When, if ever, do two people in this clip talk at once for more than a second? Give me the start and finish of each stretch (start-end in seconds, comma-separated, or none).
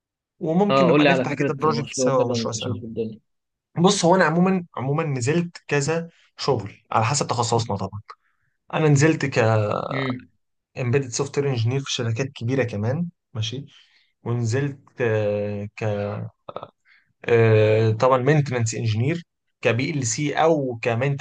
0.7-2.8